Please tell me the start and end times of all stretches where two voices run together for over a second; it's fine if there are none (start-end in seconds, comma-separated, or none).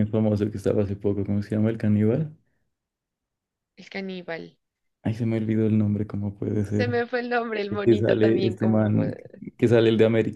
7.7-9.2